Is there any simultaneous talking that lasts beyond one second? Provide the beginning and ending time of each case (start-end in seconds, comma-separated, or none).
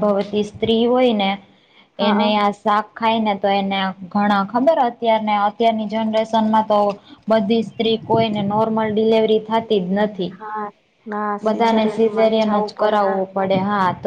11.5-13.0